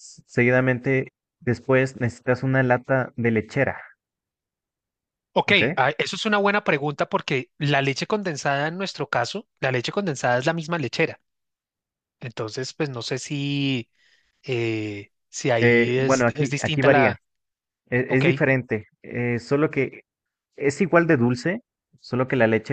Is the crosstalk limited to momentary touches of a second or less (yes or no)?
no